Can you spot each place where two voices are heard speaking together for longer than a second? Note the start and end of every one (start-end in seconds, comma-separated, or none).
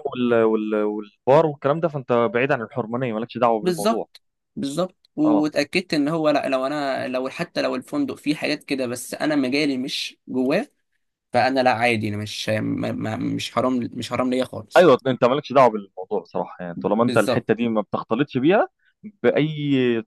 none